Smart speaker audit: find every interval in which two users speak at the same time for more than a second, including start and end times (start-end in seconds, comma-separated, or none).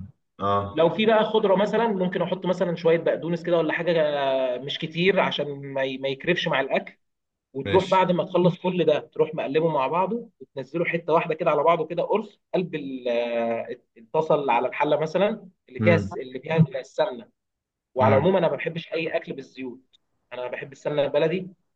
none